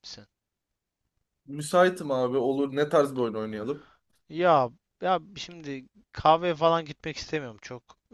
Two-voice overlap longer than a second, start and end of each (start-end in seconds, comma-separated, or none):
none